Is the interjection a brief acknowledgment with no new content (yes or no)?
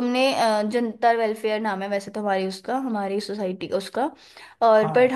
yes